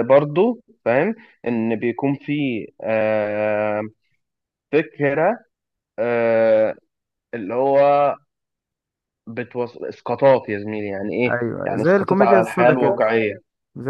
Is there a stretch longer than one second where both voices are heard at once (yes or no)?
yes